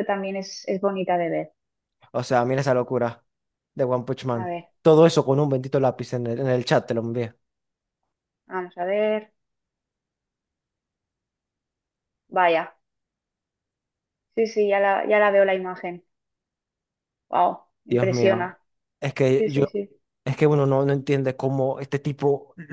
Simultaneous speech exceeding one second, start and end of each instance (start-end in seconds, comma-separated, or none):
none